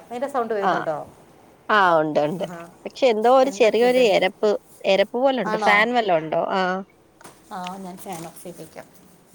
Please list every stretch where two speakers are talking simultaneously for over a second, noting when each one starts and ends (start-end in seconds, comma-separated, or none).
none